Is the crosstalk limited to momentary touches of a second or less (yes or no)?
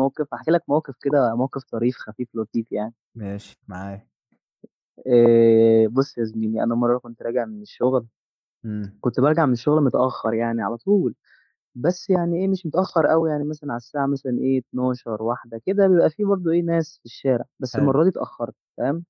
yes